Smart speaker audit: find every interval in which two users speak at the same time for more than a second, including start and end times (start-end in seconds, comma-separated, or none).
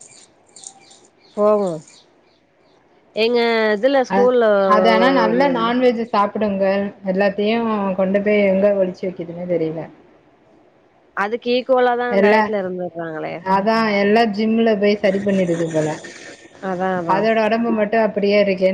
none